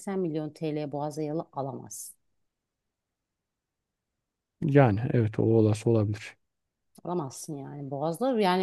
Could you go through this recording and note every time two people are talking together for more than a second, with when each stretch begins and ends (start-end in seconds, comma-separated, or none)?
none